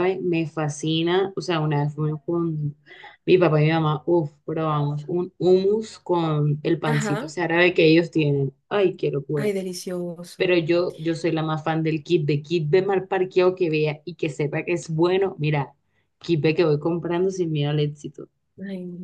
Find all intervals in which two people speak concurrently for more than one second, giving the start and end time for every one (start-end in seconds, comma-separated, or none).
none